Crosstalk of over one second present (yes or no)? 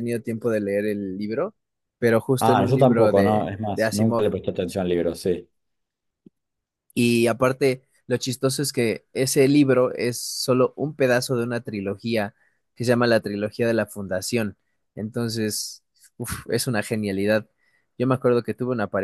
yes